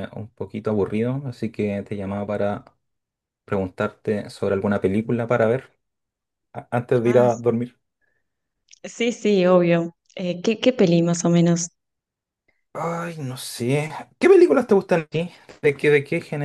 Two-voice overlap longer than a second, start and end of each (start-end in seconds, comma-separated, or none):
none